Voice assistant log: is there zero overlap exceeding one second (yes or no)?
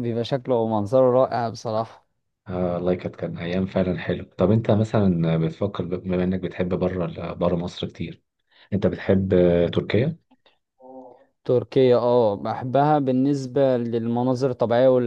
yes